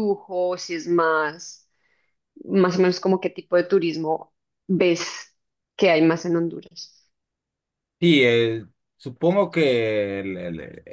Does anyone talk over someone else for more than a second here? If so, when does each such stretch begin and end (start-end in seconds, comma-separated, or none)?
none